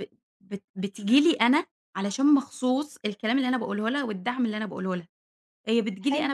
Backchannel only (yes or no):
yes